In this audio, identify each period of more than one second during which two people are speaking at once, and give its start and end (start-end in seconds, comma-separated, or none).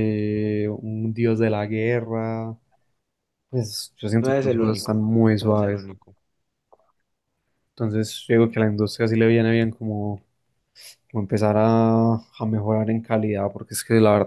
4.2-5.9